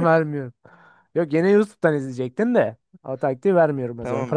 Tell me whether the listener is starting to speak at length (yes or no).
yes